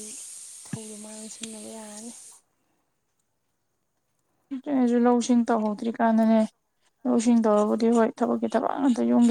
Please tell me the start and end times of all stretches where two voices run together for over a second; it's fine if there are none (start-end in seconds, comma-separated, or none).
none